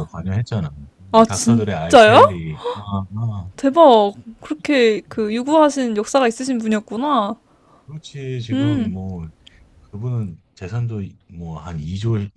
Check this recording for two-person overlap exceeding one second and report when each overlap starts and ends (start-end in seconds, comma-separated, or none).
1.1-2.4